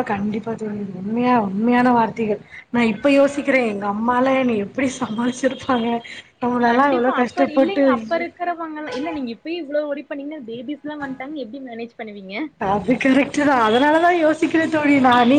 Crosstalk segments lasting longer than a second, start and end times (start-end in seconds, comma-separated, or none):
6.7-8.2